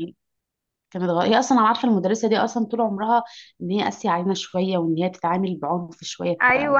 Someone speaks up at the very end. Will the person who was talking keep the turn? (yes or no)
no